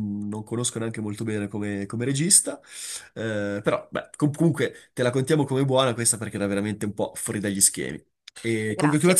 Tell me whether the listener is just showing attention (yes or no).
yes